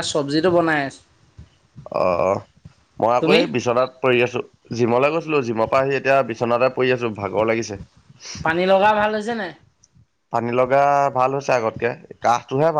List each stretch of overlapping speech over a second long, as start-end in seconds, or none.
none